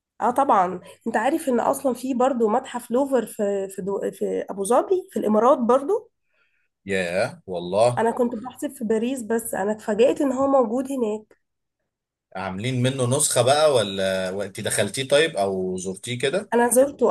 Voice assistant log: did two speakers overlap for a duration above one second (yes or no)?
no